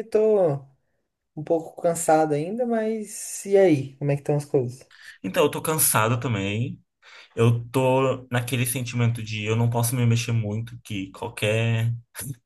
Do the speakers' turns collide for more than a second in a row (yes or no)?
no